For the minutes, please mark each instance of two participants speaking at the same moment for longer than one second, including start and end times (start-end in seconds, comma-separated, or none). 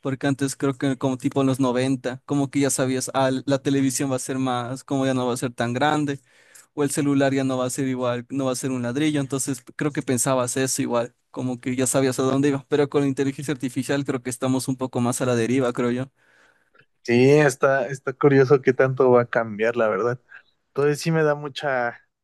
none